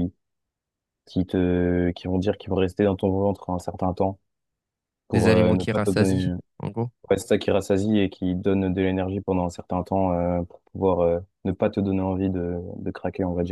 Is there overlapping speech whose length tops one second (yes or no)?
yes